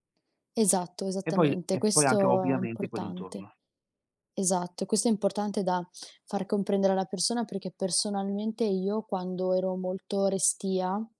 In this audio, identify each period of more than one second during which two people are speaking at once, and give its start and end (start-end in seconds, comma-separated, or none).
1.3-3.5